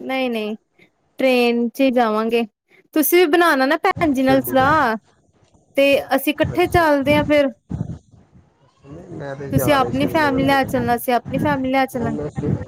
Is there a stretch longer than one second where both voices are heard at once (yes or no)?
yes